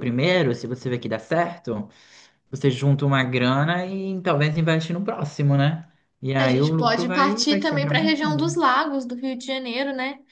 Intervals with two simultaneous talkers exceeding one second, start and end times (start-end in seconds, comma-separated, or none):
6.4-8.6